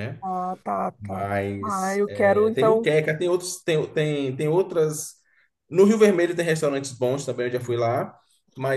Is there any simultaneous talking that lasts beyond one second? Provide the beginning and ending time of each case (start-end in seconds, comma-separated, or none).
1.0-2.9